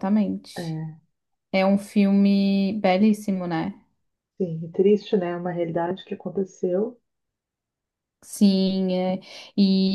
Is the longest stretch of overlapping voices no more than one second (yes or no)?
yes